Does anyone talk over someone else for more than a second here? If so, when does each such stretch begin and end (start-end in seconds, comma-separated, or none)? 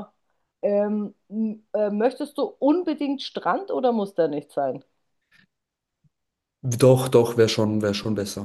none